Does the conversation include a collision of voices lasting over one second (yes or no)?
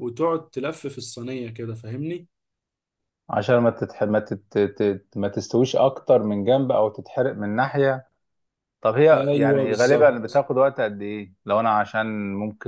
yes